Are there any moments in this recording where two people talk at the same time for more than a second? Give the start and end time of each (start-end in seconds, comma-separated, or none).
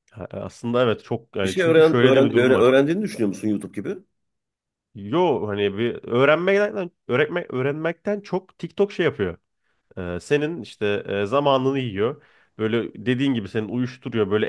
1.4-2.7